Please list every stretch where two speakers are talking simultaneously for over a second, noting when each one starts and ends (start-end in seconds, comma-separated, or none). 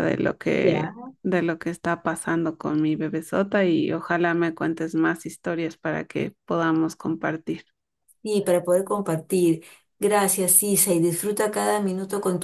none